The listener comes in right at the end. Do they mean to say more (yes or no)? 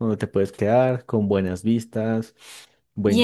yes